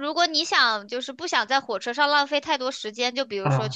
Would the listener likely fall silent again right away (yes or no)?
yes